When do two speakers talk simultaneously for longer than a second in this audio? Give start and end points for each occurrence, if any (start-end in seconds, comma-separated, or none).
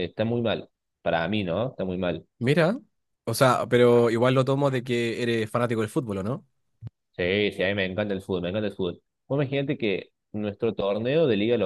none